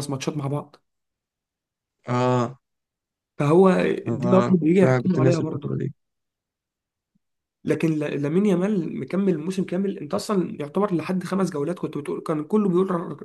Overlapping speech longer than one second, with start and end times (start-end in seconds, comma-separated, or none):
4.1-5.8